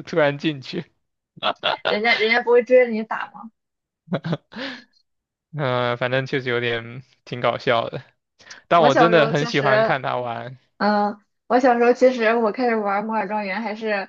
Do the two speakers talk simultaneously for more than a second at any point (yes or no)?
yes